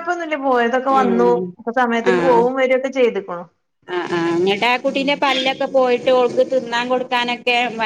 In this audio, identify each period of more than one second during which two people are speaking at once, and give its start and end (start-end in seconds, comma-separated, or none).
none